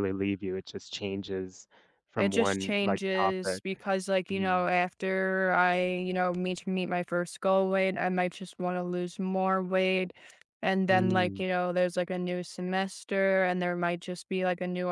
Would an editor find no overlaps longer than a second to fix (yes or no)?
no